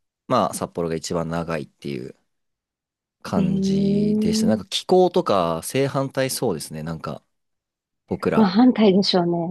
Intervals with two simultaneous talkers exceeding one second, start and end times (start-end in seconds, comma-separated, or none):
3.4-4.6